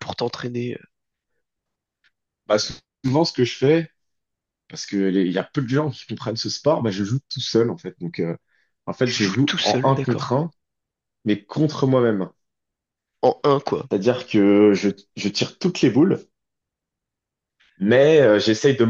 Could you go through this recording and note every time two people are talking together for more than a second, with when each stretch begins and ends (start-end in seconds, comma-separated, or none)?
9.1-10.3